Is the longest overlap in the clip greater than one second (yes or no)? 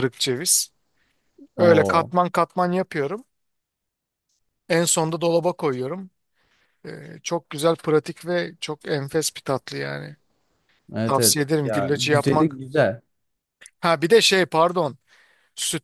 yes